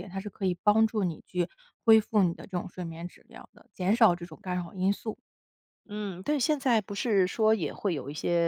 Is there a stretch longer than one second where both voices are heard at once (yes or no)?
no